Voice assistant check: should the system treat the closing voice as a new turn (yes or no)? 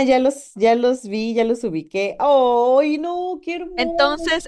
yes